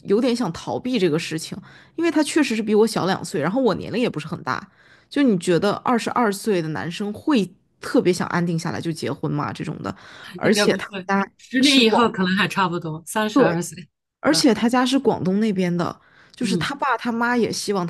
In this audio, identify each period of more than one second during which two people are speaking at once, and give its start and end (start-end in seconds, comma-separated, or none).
10.4-12.2